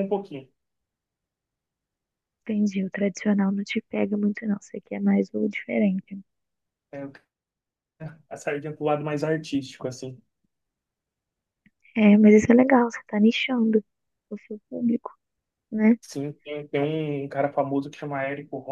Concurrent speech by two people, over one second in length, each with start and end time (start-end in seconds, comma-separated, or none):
none